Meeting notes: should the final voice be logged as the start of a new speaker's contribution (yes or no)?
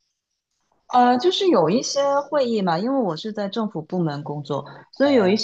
no